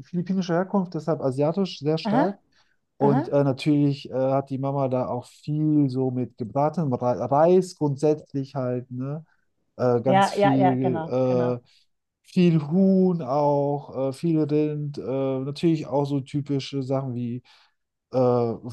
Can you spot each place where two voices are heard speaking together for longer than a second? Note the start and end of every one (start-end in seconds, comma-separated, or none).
10.1-11.5